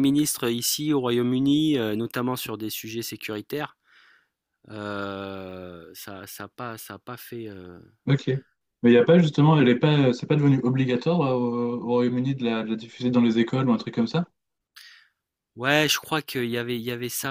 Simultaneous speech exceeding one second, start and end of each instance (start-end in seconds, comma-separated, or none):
none